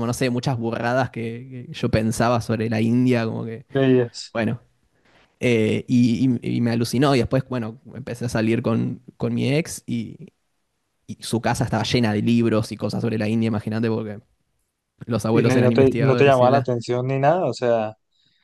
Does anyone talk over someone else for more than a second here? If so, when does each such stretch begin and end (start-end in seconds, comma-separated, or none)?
15.3-16.7